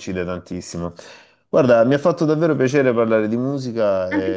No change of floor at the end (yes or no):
no